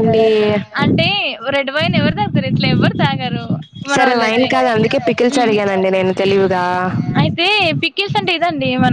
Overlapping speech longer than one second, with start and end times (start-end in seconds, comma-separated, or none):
none